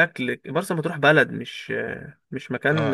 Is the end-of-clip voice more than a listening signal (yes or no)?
yes